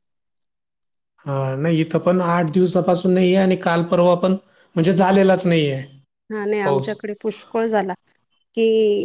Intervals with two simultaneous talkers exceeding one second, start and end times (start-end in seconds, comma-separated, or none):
none